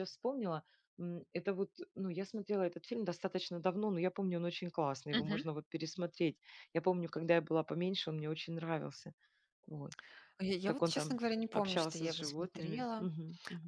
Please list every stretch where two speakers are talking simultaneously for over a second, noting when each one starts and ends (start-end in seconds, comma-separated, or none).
10.6-12.9